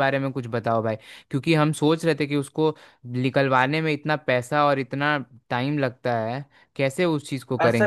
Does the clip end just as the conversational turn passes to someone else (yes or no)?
yes